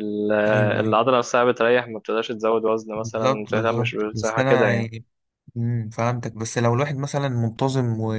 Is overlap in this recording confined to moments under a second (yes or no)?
no